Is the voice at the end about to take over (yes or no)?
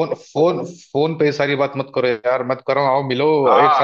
yes